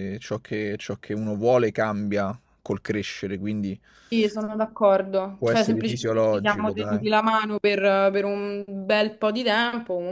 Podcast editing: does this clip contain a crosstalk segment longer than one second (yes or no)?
yes